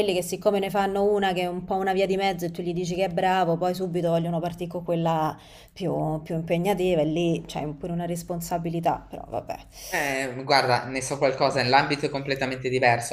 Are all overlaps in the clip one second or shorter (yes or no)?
yes